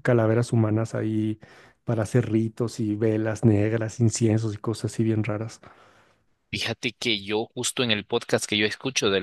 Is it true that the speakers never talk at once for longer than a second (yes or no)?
yes